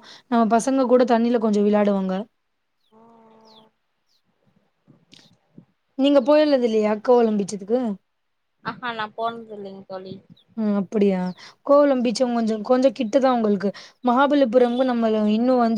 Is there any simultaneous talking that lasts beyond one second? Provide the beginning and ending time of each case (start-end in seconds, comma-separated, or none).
none